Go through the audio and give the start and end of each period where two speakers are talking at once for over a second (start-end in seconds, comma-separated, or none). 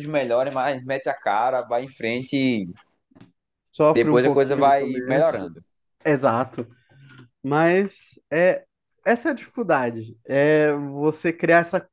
4.0-5.5